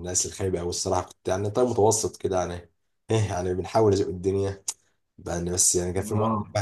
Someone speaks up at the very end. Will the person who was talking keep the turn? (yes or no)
yes